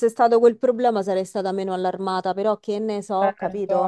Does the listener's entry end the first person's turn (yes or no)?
yes